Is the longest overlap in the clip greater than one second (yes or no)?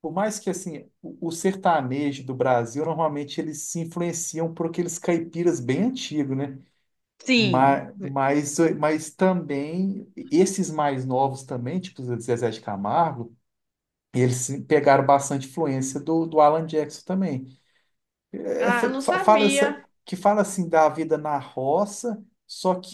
yes